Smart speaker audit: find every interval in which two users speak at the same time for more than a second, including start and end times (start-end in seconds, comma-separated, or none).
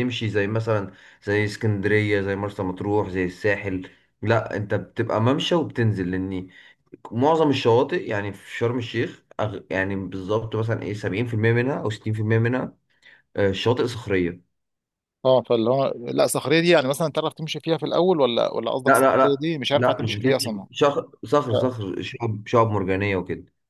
18.9-20.7